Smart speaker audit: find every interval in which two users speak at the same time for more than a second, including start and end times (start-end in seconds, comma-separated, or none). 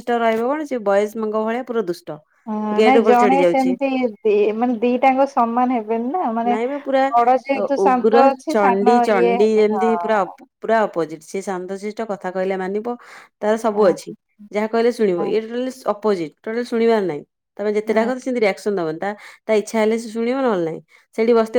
7.6-10.4